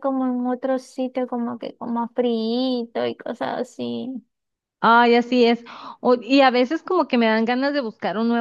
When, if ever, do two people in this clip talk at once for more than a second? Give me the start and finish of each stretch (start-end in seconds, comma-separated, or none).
none